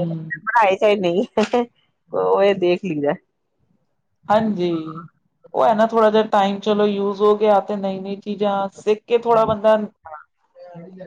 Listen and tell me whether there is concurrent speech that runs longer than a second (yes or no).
no